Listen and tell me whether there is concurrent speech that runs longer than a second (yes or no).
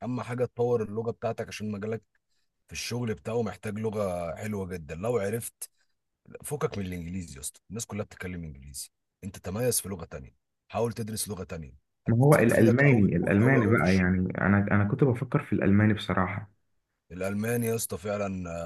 yes